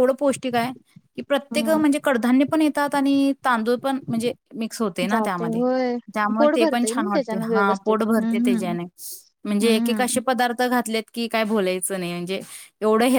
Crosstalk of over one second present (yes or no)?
yes